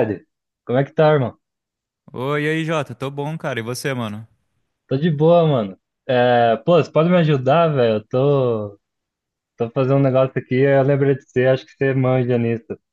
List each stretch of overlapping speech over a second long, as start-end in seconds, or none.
none